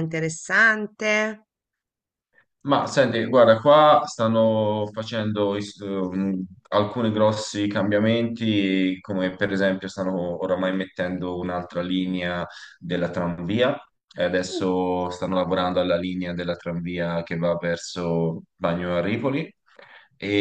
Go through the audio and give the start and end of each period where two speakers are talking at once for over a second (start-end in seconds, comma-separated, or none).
none